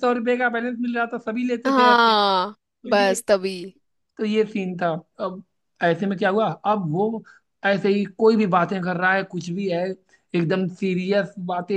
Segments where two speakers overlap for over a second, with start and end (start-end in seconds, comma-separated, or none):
none